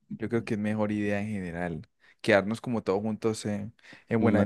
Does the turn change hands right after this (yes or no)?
no